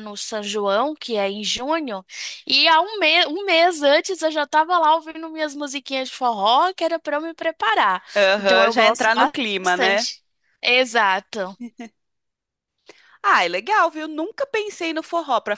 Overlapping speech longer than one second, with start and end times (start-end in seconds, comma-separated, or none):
8.2-10.1